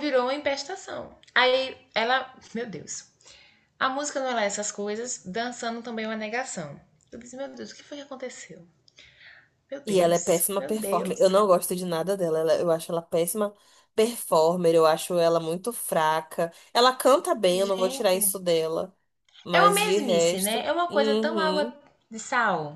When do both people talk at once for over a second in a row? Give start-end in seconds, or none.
9.8-11.3, 19.5-21.7